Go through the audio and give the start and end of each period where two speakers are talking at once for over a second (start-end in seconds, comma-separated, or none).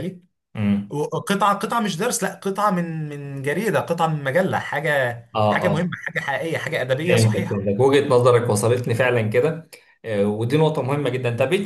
none